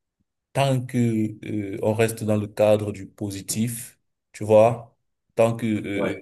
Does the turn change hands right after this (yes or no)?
no